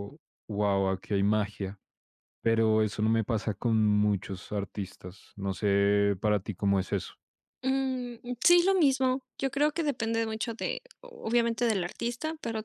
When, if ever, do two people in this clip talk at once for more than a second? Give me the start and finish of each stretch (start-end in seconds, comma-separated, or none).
none